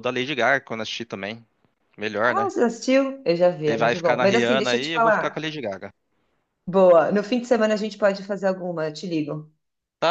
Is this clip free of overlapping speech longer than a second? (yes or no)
no